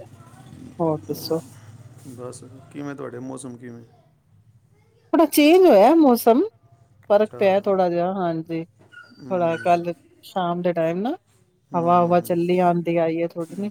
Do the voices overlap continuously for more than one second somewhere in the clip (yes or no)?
no